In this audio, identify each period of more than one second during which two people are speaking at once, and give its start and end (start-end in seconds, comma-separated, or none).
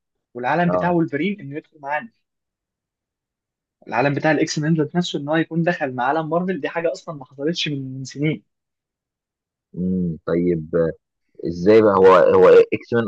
none